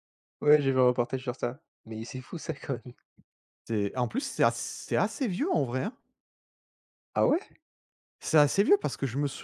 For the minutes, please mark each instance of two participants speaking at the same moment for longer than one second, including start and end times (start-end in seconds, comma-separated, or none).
none